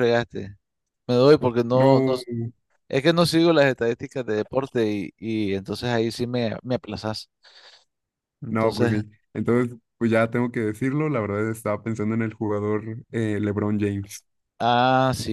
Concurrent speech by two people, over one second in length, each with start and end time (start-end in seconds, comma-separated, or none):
none